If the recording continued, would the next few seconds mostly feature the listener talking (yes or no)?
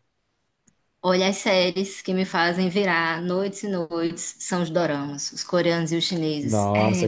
yes